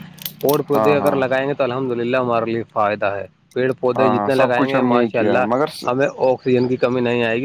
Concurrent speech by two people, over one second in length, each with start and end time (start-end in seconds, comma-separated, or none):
4.0-5.9